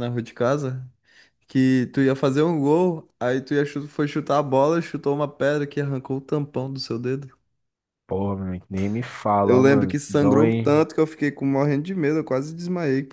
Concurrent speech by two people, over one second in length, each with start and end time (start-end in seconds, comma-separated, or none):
9.4-10.8